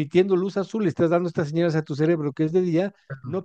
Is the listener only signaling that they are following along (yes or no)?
yes